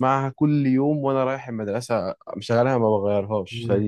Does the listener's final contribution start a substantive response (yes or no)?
yes